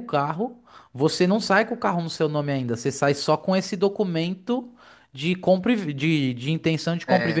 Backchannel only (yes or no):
yes